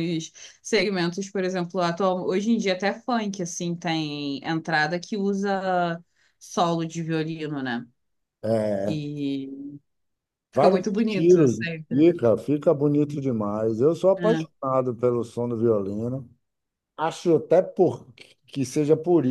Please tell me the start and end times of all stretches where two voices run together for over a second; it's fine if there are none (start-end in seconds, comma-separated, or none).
10.5-12.1